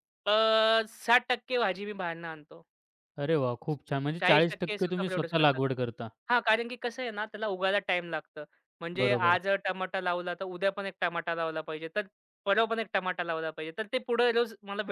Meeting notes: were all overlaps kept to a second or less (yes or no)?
no